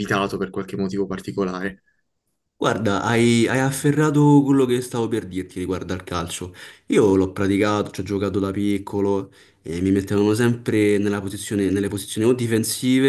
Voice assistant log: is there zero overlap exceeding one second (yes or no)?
yes